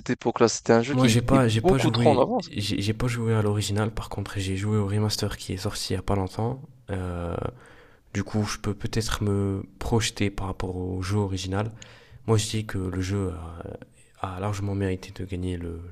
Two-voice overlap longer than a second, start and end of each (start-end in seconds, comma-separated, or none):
0.9-2.5